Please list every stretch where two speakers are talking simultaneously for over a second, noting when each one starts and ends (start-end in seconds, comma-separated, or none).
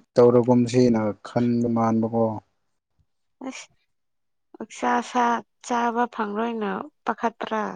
none